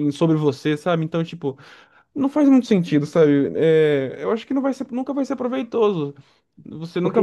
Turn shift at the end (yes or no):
no